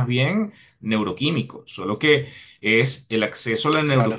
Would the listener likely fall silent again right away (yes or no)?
yes